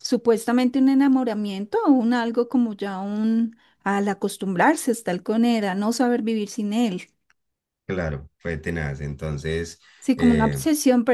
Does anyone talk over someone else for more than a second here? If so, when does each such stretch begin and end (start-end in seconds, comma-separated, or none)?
none